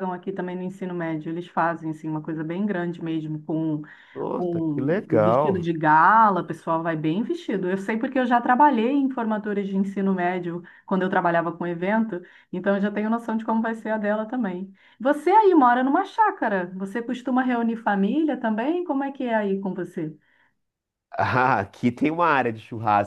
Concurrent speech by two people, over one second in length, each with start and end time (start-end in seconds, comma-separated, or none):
4.4-5.7